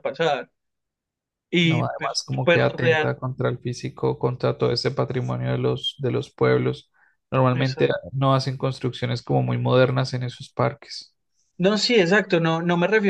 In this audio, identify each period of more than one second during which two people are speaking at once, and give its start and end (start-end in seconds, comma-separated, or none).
1.6-3.2